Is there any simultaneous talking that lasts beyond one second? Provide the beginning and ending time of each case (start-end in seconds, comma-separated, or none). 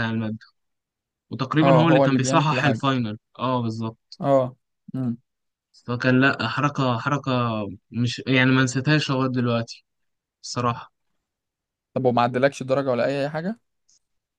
1.6-2.8